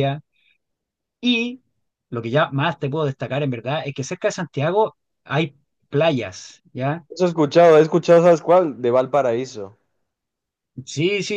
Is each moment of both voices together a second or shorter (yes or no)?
yes